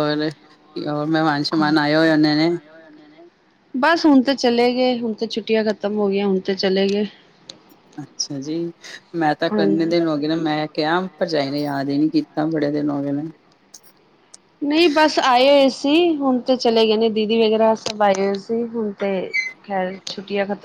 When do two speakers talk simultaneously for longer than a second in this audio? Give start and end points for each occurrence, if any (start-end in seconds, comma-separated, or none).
none